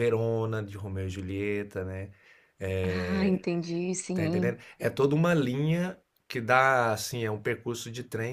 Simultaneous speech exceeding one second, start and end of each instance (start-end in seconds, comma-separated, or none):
none